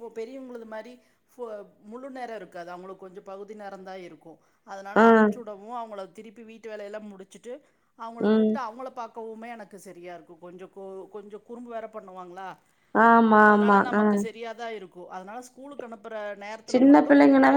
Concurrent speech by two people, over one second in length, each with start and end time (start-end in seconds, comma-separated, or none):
none